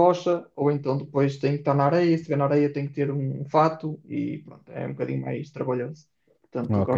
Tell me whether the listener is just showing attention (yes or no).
no